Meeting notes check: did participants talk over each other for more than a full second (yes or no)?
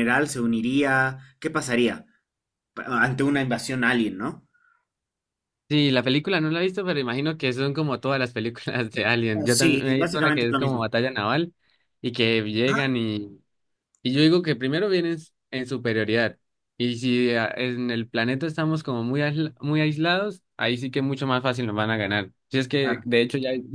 yes